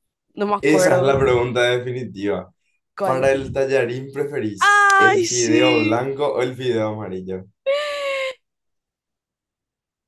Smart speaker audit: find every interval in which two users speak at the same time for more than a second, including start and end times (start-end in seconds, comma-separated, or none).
4.6-6.1